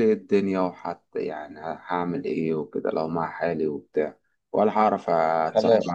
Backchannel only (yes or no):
yes